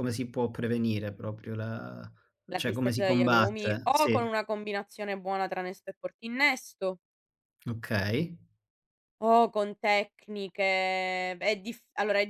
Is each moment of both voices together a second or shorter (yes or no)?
no